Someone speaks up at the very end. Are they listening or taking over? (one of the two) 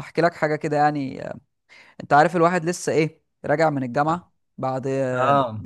listening